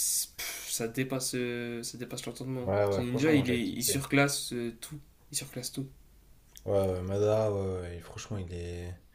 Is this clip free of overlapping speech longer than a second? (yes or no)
no